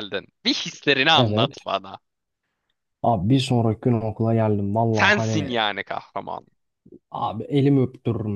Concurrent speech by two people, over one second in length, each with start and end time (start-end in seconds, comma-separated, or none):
none